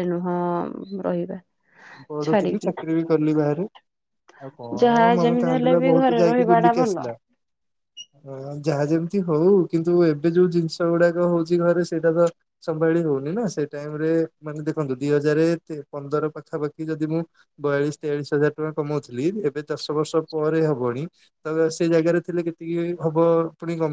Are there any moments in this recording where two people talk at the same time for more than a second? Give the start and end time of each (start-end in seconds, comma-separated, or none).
4.8-7.0